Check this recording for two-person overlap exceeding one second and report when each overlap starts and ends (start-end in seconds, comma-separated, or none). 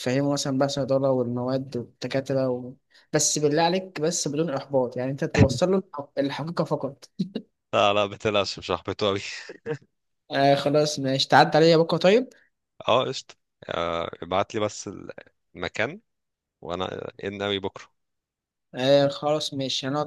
none